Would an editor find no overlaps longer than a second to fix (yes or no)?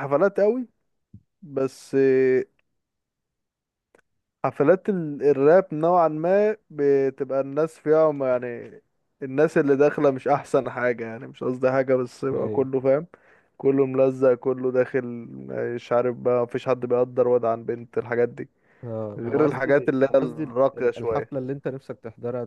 no